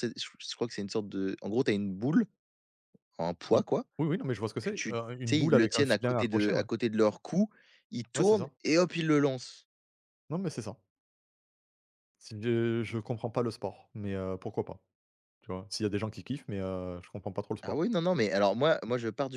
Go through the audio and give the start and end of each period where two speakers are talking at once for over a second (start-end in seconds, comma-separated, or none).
4.6-6.6